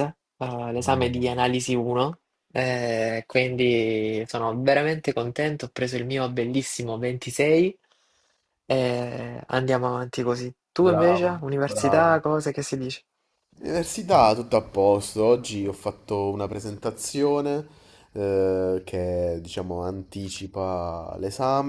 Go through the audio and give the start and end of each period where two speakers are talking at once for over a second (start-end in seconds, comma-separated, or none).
10.8-12.2